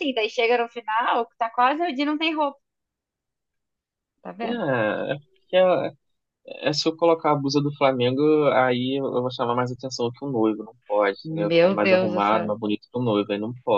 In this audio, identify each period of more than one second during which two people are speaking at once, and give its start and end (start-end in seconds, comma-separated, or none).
11.2-12.5